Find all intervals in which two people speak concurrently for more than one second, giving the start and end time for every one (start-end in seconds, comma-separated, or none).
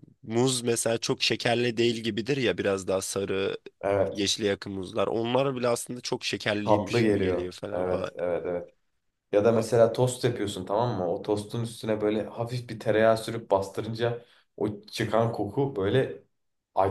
6.6-8.1